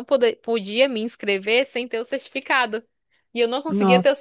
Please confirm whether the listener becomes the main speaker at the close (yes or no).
no